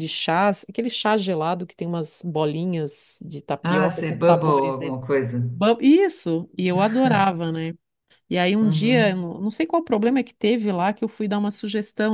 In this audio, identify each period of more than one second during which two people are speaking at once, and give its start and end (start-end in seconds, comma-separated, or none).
3.6-5.0